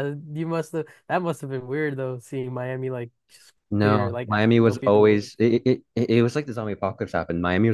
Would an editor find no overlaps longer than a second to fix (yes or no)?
no